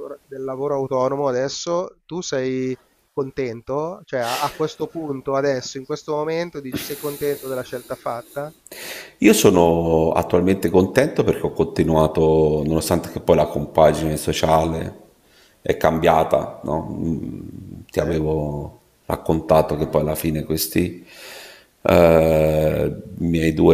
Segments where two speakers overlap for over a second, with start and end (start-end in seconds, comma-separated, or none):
none